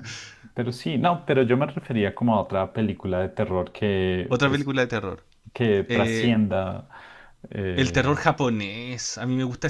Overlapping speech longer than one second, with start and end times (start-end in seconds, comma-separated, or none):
none